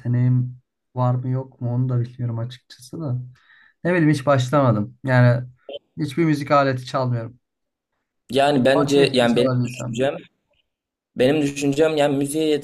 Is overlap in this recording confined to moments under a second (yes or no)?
no